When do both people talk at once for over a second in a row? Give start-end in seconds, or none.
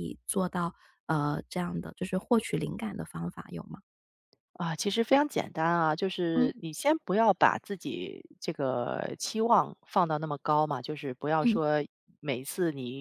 none